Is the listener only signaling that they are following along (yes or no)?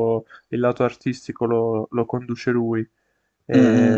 no